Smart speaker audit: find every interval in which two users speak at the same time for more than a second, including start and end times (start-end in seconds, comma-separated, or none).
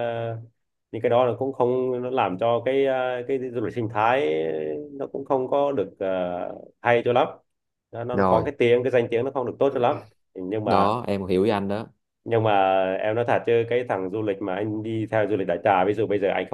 none